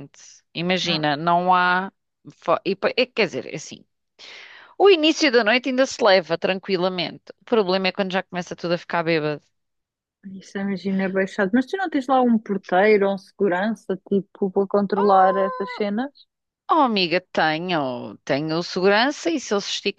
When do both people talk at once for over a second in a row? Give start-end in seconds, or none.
none